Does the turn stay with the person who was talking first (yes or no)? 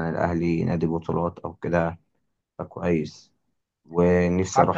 yes